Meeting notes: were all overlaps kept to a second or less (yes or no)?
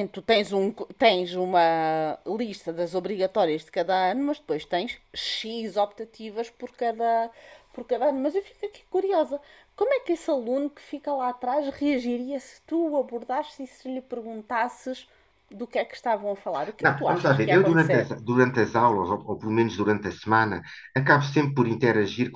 no